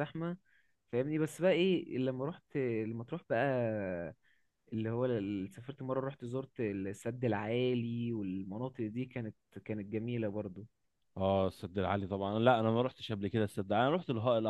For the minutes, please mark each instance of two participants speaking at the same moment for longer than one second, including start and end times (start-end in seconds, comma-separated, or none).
none